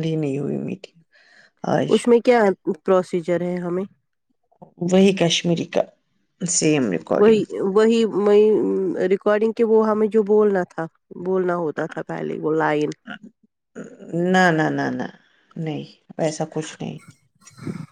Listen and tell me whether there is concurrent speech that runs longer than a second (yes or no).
no